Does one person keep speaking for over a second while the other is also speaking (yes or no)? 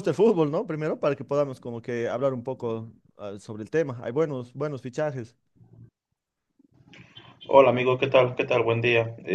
no